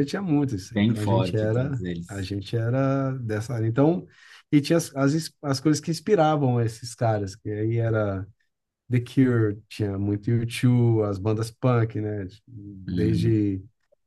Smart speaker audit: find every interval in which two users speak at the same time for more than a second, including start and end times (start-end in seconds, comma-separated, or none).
0.7-2.3